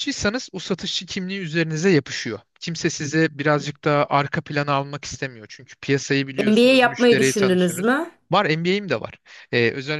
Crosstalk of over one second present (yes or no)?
yes